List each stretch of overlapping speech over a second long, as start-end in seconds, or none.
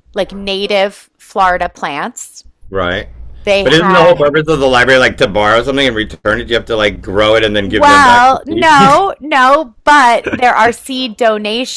7.6-9.0